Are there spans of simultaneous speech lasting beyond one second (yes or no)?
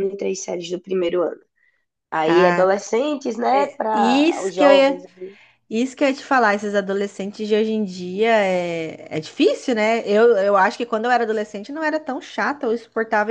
yes